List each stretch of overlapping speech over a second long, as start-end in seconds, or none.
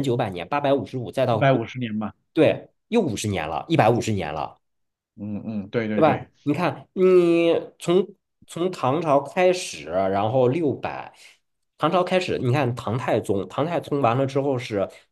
none